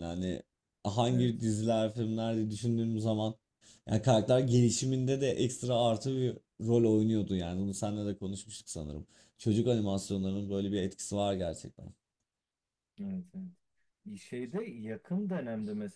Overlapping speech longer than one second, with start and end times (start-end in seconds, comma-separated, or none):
none